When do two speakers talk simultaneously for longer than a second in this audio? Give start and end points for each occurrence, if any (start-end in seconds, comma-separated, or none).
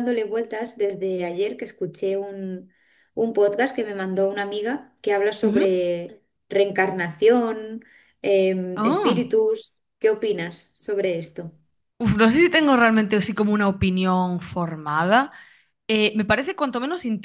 none